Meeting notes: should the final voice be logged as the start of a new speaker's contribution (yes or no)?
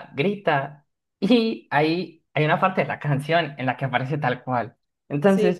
no